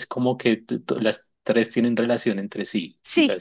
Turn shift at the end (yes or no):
yes